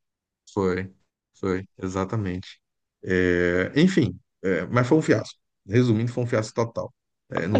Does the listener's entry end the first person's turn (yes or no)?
yes